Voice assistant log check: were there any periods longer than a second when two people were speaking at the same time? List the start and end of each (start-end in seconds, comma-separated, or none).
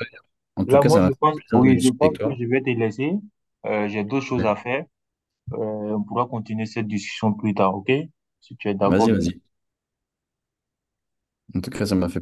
0.6-2.4